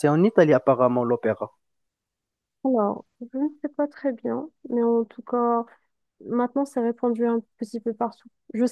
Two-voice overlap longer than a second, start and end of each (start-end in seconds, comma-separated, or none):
none